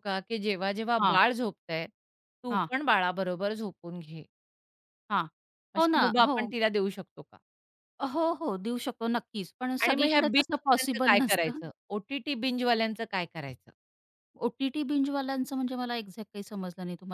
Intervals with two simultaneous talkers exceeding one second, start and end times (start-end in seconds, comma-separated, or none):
9.8-11.6